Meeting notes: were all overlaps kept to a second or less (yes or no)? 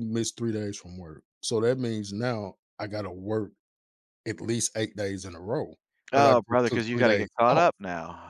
no